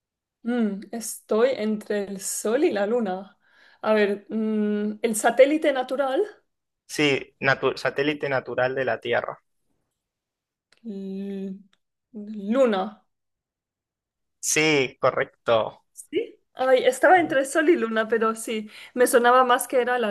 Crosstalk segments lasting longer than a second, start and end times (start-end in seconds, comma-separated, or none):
none